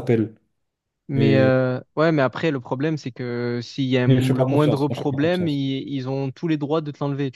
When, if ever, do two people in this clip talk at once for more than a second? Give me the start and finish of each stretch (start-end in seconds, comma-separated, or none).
4.1-5.6